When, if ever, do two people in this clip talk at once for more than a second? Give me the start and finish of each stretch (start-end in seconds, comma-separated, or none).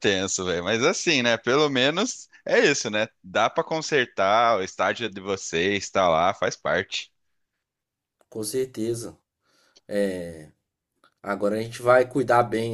none